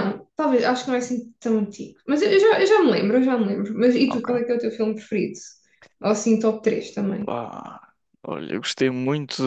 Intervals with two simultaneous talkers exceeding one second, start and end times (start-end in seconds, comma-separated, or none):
none